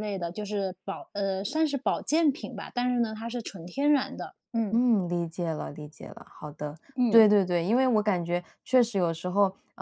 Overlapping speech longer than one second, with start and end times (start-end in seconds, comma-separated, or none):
none